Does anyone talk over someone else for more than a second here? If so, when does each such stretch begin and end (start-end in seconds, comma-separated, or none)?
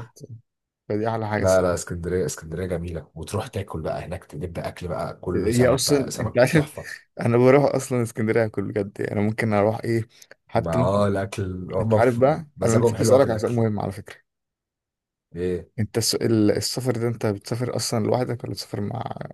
5.3-6.7, 11.8-13.6